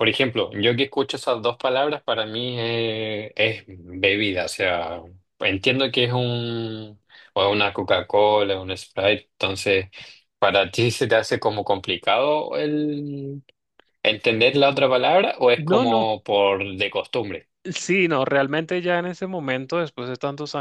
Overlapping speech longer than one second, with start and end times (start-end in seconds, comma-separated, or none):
none